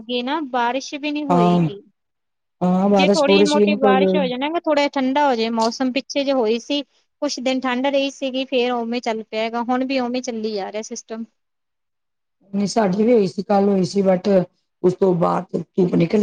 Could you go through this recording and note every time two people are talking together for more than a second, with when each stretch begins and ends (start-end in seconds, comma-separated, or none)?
3.0-4.2